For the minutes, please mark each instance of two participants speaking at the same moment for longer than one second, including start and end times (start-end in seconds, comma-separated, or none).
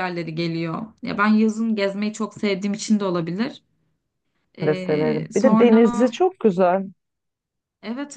4.6-6.1